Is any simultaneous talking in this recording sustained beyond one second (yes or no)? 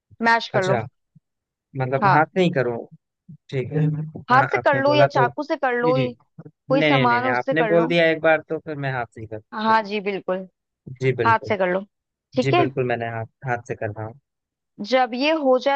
yes